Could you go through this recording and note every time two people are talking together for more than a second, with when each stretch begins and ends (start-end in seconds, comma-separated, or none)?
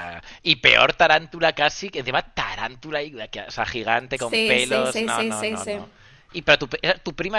4.1-5.8